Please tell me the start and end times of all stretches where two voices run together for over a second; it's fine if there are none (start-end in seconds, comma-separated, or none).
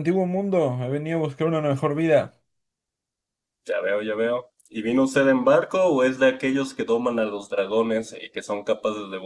none